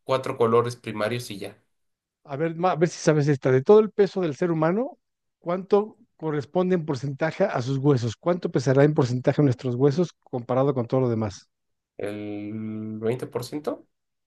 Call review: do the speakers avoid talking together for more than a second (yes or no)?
yes